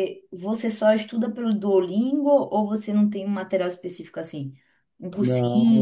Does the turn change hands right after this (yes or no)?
yes